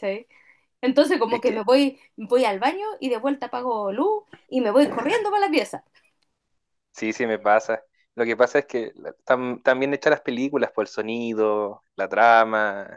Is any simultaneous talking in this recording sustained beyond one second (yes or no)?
no